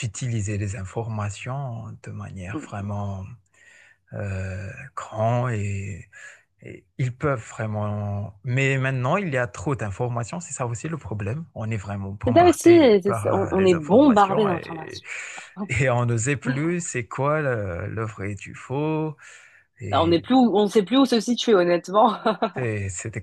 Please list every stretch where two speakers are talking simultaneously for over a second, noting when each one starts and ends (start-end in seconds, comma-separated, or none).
12.3-15.0